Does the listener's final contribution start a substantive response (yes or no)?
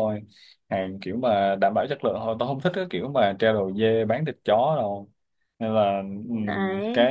no